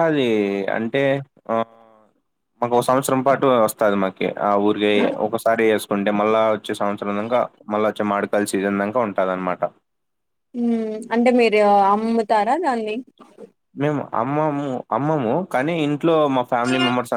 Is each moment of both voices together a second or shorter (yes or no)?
yes